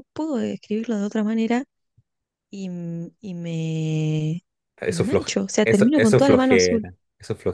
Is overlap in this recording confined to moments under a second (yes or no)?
no